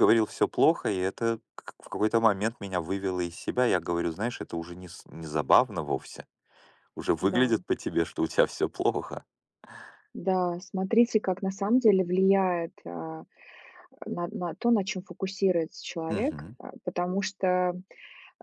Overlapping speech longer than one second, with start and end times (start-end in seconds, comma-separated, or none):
none